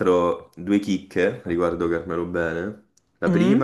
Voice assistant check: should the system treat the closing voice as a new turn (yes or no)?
no